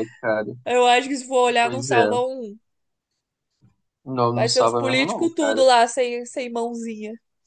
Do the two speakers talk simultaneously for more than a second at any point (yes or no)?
yes